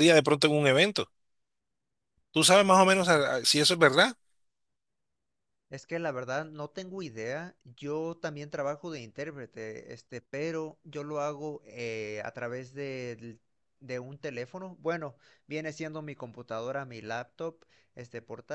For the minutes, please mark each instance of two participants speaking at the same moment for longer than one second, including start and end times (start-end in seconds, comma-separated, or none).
none